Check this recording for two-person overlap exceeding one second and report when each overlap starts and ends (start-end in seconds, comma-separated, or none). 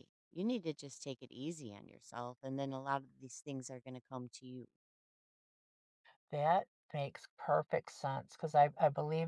none